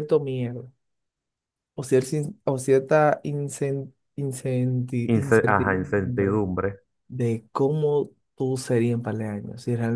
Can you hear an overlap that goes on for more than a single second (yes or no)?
yes